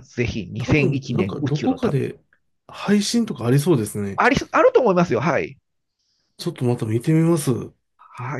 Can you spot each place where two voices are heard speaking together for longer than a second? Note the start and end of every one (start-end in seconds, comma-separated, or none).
0.6-2.0